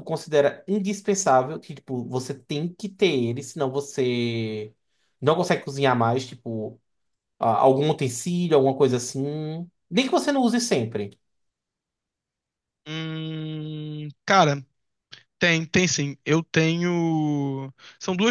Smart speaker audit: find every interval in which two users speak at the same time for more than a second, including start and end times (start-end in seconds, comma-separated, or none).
none